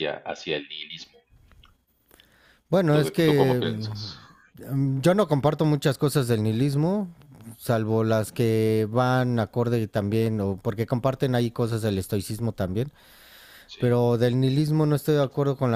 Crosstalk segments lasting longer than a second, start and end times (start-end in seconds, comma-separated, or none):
2.9-4.2